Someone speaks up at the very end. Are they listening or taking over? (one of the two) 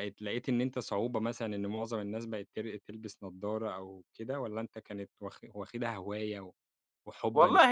taking over